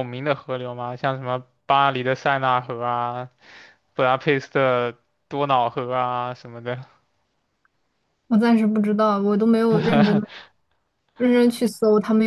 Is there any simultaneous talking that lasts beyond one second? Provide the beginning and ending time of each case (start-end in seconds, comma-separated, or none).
none